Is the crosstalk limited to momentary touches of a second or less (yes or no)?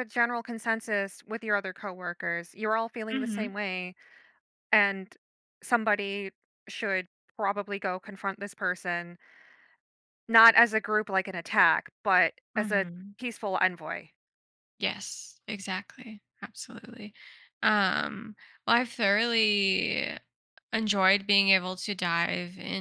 yes